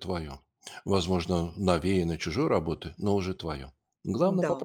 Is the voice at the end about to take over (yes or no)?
yes